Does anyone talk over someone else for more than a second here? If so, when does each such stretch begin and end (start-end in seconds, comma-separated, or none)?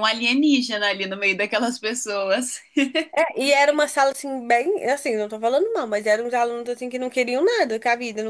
none